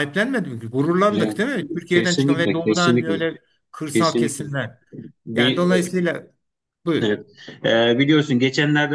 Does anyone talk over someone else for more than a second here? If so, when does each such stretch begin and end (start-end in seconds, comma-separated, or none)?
1.9-3.2